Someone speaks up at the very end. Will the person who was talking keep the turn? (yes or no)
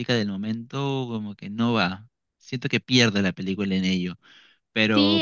no